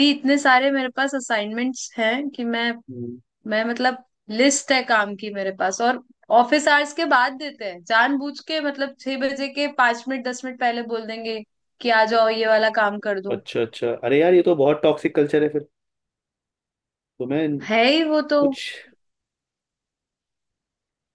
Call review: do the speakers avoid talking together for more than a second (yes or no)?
yes